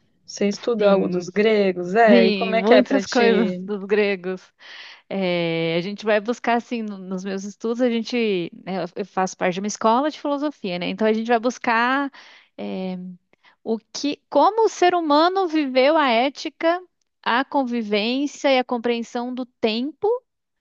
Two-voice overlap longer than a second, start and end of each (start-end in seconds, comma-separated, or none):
2.1-3.7